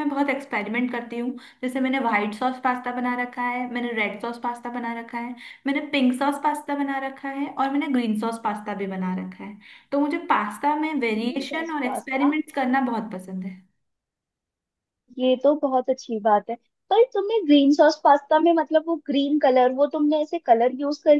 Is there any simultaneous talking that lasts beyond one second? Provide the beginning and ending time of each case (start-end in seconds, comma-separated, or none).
11.1-12.3